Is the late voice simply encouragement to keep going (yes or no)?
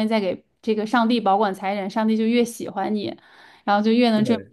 yes